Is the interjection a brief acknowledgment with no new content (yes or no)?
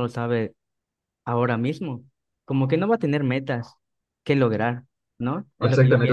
no